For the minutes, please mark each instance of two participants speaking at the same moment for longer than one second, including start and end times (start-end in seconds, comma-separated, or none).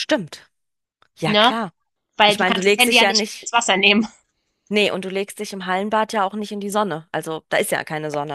2.2-3.6